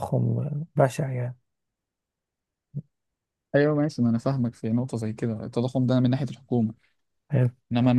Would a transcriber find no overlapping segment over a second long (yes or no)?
yes